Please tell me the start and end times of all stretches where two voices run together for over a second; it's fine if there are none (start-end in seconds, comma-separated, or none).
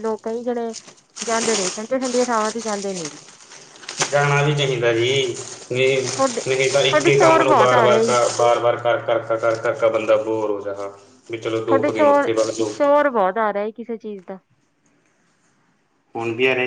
6.5-8.1